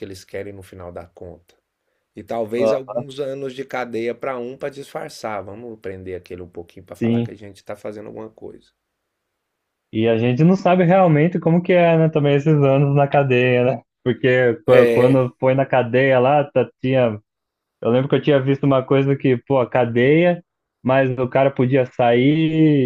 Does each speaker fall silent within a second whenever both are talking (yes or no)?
yes